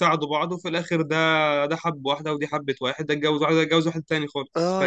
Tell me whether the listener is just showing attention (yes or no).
no